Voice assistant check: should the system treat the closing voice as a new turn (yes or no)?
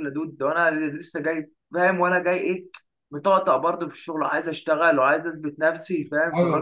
yes